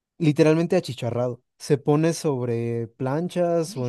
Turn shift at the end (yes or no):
no